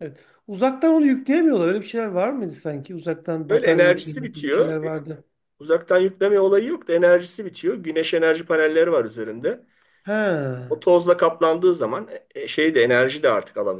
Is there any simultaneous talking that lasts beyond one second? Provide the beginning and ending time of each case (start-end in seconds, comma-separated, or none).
3.5-4.9